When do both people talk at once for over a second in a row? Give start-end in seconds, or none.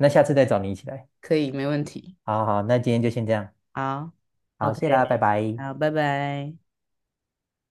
none